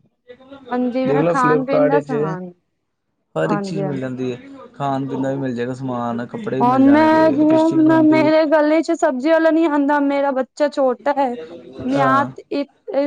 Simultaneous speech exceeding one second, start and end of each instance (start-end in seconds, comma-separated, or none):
6.6-8.3